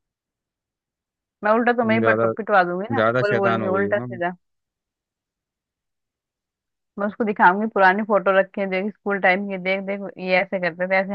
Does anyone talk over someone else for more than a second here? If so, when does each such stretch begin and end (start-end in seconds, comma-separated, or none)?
2.9-4.2